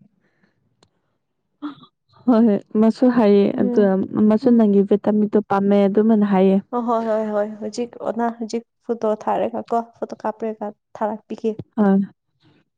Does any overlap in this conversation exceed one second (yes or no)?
no